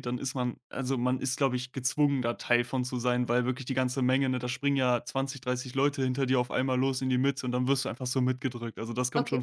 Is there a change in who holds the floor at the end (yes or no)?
yes